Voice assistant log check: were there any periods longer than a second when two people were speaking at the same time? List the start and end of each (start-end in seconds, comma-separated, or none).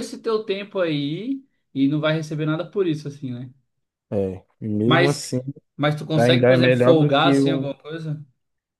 6.2-7.7